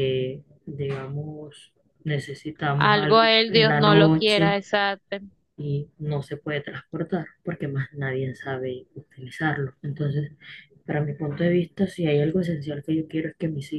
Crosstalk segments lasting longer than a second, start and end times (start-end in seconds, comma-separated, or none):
2.8-4.6